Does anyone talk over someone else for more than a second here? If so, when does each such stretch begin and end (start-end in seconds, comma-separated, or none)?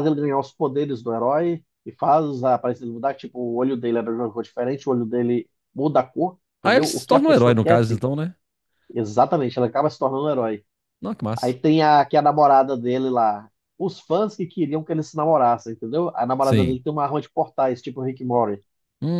6.6-8.0